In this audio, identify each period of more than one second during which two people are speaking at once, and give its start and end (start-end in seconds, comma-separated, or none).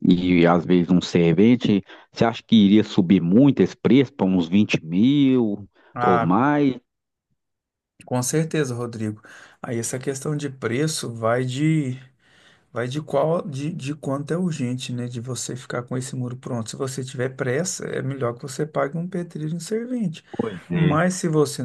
none